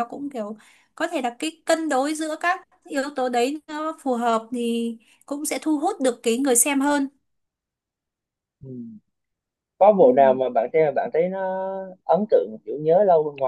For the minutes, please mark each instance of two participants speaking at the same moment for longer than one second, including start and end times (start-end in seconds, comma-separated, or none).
none